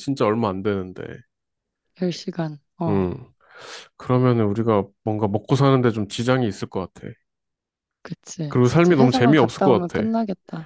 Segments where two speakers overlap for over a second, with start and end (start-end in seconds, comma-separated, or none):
8.5-10.1